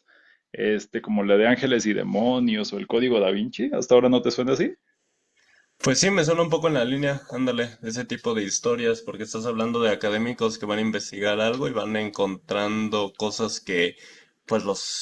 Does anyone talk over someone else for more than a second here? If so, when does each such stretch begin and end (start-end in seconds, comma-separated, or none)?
none